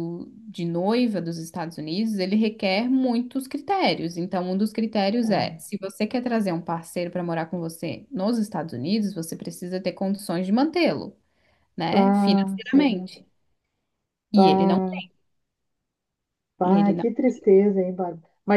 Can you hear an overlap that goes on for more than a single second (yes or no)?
yes